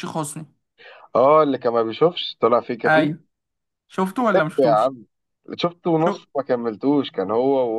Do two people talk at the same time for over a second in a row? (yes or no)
no